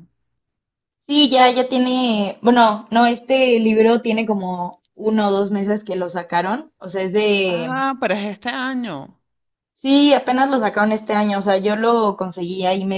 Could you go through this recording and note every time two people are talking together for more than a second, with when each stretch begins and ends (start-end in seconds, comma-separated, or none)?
none